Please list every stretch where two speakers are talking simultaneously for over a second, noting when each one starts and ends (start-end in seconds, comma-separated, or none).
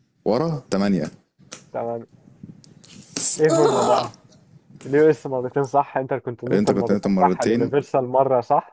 6.5-7.7